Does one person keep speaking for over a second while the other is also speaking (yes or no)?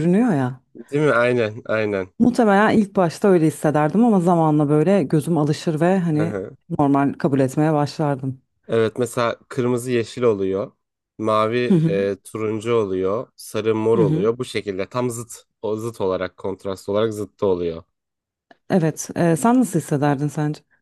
no